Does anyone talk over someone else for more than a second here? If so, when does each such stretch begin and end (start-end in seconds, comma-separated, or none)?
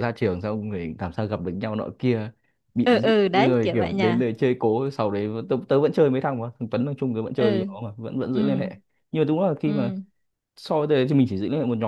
2.8-4.3